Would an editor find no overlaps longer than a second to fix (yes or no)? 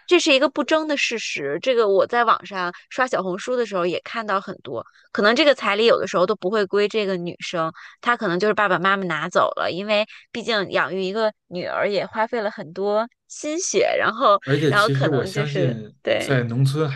no